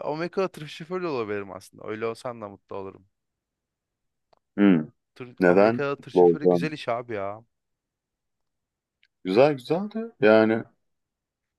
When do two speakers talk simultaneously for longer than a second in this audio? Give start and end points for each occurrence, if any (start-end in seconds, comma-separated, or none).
5.4-6.8